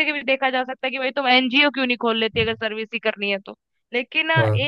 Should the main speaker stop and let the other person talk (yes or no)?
no